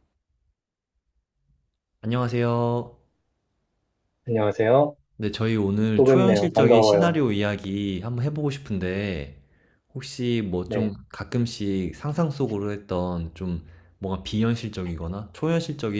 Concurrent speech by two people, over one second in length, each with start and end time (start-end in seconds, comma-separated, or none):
6.0-7.2